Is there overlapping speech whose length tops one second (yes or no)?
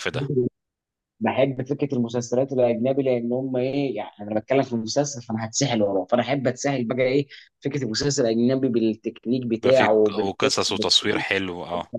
yes